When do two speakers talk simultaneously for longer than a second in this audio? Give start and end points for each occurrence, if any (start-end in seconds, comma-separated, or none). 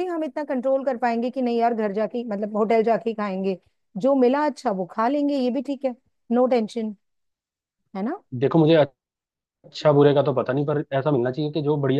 none